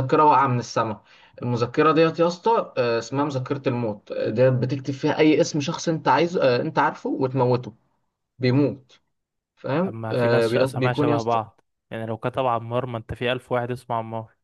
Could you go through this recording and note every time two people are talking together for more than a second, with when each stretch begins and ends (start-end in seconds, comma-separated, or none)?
9.8-11.4